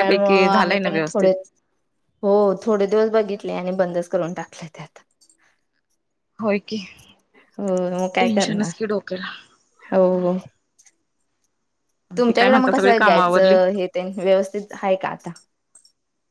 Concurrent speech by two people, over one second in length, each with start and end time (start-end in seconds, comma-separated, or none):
12.2-13.6